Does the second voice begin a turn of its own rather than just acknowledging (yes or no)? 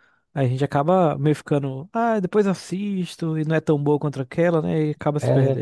yes